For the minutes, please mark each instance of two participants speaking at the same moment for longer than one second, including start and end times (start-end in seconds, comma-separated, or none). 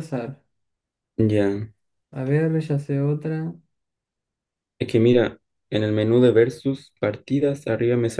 none